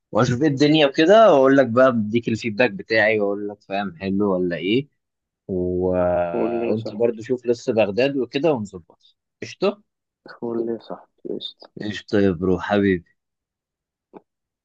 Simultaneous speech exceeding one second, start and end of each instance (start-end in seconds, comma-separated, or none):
none